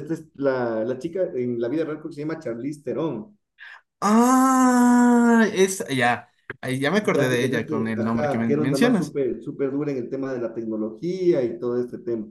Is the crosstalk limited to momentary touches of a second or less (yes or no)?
no